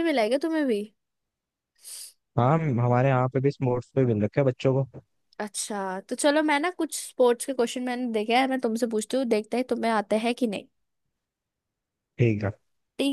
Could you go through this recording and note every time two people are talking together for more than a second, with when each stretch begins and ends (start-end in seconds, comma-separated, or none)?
none